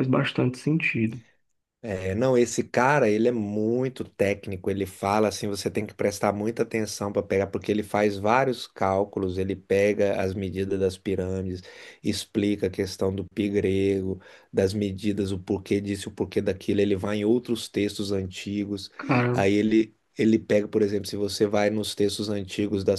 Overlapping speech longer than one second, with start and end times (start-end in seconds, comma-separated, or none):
none